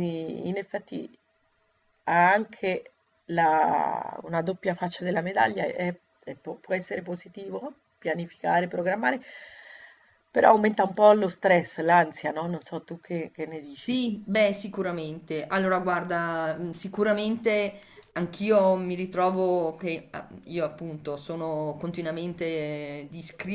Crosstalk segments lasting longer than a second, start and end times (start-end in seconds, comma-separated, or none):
none